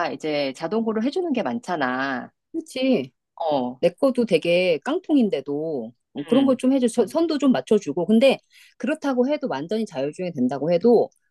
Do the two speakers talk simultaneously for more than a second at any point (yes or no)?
no